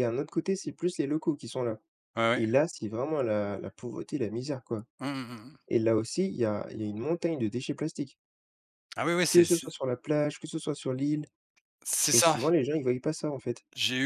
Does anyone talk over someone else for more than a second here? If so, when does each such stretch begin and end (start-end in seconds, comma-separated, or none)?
none